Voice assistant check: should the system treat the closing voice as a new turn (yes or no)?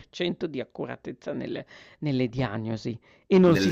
no